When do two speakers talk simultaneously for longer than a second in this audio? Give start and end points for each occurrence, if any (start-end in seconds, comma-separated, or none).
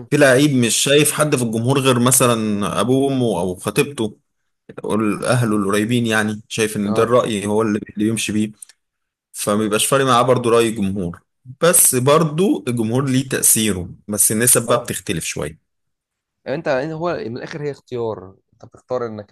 none